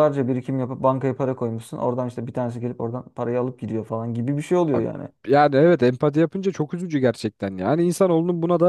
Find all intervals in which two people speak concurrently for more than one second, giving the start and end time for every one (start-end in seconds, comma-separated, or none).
none